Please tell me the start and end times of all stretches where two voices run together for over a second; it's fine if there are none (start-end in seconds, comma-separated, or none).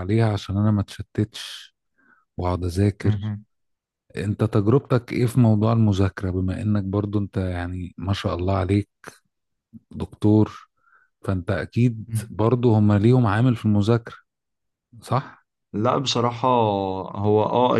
none